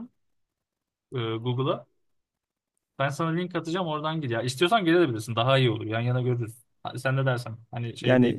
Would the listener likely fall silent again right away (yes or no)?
no